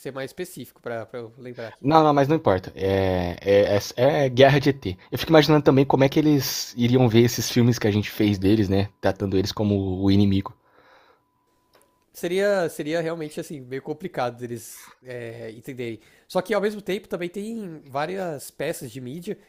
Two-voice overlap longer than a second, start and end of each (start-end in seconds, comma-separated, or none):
none